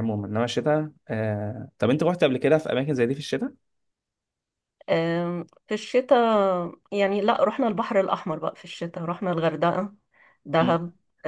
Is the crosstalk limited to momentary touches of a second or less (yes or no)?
yes